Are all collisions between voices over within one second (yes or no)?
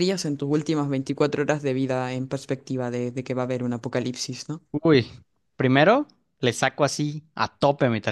yes